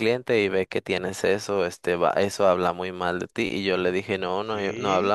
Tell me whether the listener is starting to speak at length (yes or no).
no